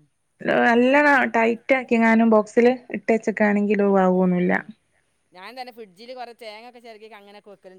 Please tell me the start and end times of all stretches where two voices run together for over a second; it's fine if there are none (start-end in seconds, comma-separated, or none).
none